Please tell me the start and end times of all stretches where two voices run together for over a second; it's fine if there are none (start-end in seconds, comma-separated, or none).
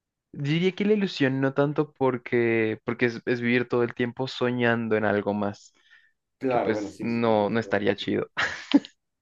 6.5-8.1